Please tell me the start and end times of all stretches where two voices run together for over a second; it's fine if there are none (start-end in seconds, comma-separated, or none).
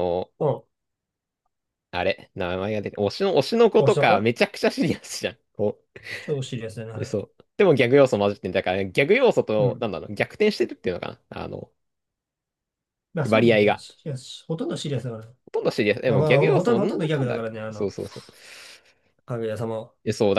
16.1-17.9